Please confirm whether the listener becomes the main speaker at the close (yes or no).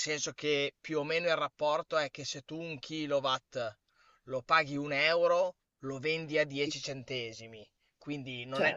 no